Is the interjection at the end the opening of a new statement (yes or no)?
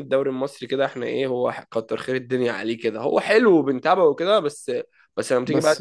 no